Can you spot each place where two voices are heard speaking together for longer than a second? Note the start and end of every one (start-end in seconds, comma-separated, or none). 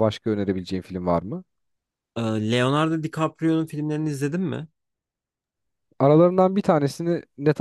none